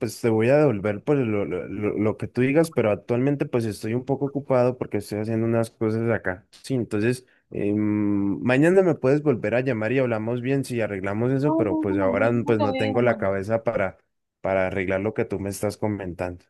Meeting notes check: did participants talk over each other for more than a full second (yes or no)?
yes